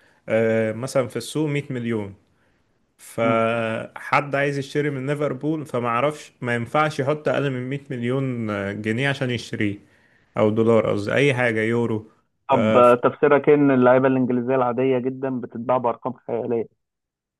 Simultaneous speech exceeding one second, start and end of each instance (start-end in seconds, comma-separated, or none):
none